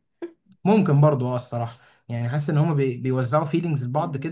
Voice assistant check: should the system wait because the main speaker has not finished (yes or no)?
yes